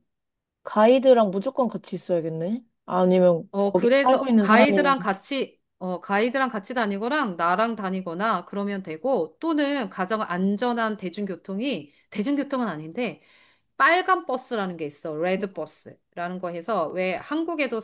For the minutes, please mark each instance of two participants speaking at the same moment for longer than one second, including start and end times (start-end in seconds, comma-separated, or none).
3.5-4.9